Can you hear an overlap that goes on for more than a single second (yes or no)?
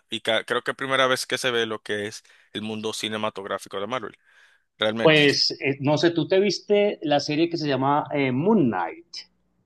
no